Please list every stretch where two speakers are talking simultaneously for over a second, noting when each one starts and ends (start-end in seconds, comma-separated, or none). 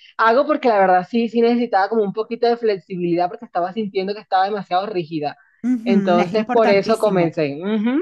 5.8-7.4